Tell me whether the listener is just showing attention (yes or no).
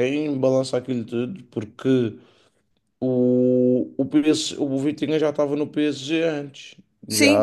no